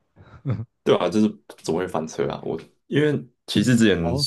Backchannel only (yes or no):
yes